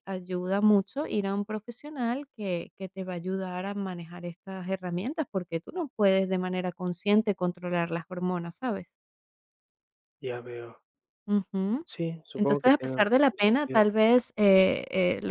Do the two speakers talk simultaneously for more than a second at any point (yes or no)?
yes